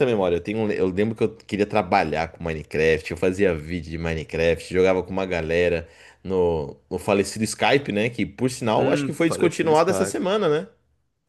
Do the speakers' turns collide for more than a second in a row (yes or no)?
yes